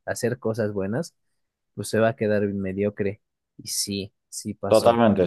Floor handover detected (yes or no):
yes